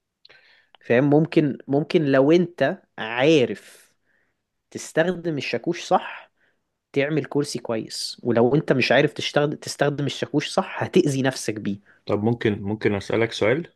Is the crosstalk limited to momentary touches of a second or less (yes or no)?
yes